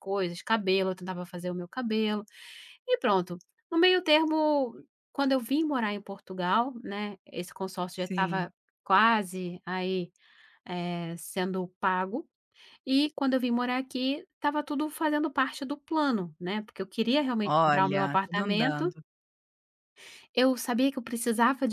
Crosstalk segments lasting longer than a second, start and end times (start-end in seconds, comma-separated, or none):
17.4-18.9